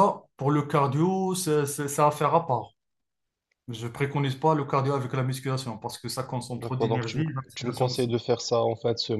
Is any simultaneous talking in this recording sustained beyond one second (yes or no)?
yes